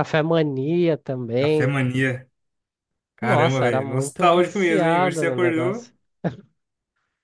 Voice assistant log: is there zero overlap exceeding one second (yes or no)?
no